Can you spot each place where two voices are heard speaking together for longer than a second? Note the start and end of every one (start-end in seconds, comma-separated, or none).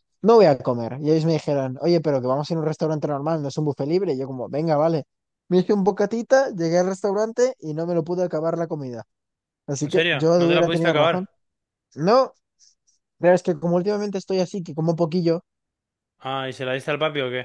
9.8-11.2